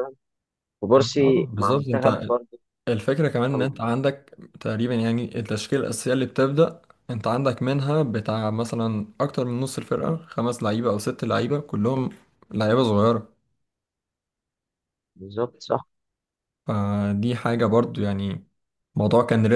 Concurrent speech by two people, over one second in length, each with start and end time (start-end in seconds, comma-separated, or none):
0.9-2.3